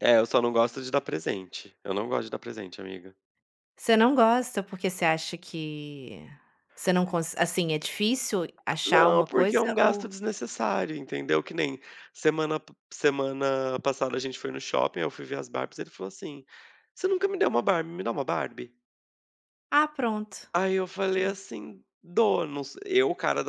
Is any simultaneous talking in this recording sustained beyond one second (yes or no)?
yes